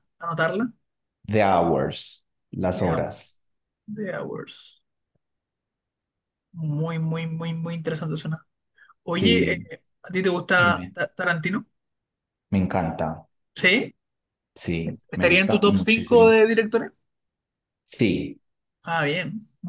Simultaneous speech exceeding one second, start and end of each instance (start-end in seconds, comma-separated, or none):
15.1-16.4